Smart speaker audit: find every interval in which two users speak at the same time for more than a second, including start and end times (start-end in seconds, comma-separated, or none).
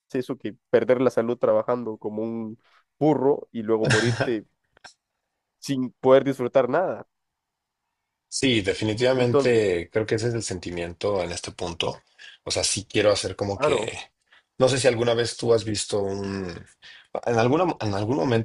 none